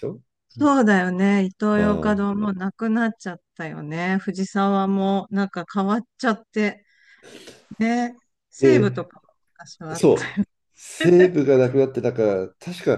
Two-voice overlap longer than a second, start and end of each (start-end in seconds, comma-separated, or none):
none